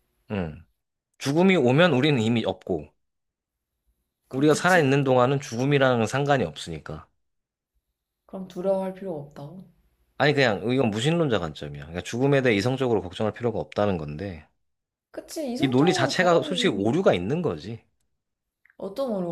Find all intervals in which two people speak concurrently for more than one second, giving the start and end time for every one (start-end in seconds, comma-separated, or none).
15.6-16.8